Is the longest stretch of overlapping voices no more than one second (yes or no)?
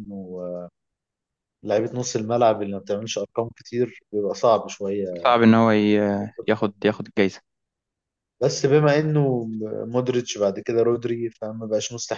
yes